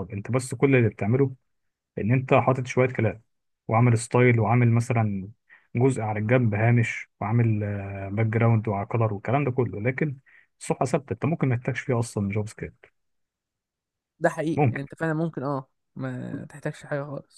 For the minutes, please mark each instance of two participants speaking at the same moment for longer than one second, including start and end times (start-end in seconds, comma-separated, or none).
none